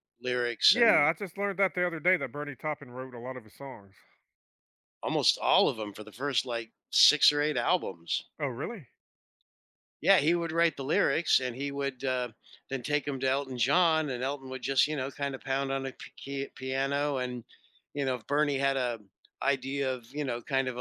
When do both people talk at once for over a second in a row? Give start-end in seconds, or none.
none